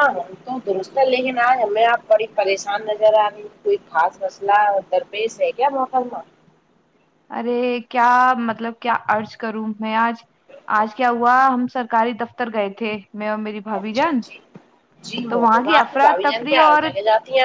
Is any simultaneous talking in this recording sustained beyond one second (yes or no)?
yes